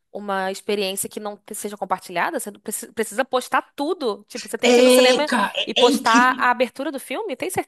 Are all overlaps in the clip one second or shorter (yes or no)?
no